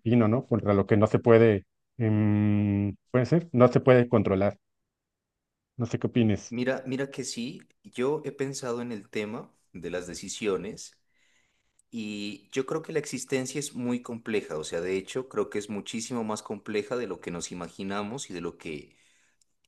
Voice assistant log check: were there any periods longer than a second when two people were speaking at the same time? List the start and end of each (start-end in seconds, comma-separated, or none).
none